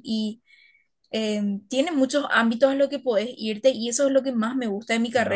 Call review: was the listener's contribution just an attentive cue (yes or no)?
yes